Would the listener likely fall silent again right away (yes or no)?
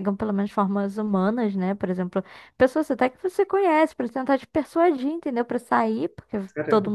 yes